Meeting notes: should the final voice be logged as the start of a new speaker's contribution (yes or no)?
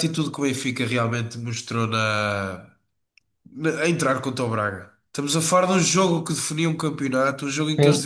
no